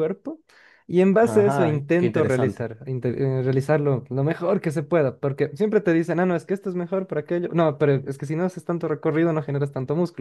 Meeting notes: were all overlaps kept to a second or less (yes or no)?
no